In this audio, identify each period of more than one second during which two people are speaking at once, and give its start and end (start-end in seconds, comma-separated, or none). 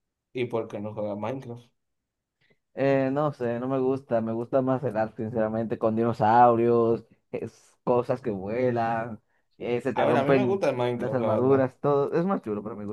9.9-11.7